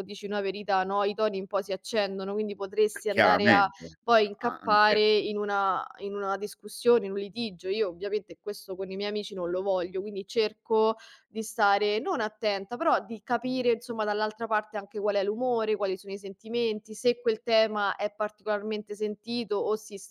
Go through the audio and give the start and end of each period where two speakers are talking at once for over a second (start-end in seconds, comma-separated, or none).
3.1-5.0